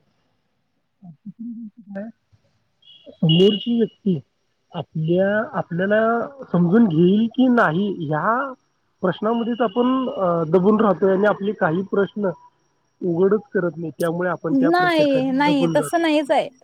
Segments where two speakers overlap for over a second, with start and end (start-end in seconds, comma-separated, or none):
14.7-16.0